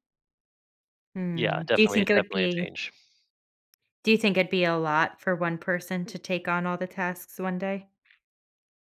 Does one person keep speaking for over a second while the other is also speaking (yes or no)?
yes